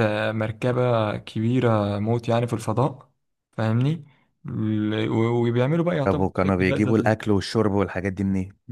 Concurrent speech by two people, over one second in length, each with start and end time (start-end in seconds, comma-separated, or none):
6.0-7.3